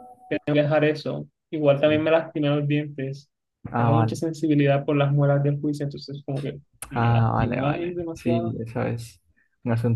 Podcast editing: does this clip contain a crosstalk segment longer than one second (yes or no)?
yes